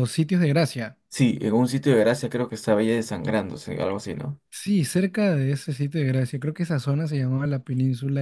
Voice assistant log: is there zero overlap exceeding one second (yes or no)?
yes